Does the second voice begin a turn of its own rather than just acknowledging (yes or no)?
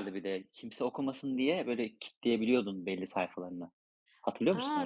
yes